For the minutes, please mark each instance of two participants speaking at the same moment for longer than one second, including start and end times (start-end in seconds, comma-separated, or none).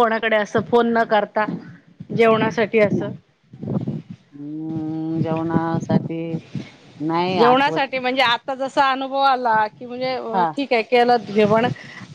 none